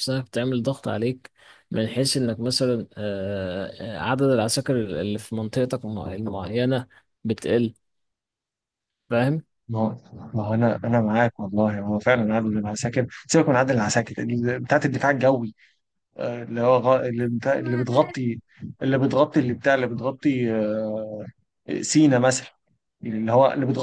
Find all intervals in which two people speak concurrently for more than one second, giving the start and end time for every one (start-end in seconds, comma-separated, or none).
none